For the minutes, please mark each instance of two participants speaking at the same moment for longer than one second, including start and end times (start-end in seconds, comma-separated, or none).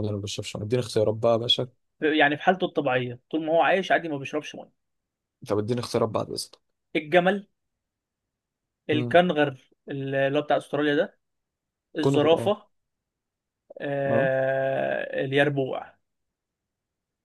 none